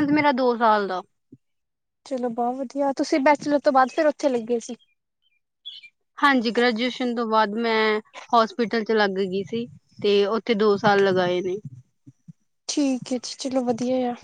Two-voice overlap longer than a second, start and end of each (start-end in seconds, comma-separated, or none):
none